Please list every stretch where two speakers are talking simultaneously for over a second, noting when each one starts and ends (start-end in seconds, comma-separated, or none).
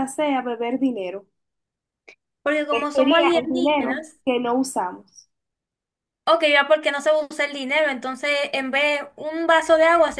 2.7-4.2